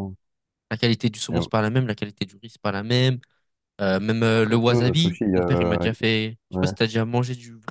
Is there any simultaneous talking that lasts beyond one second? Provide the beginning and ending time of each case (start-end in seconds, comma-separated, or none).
4.3-5.8